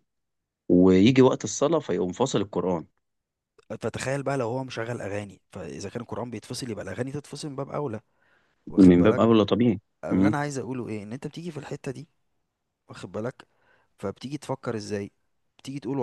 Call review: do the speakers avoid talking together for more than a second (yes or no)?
yes